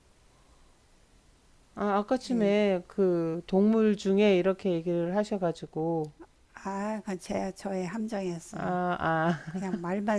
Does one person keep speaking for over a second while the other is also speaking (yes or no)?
no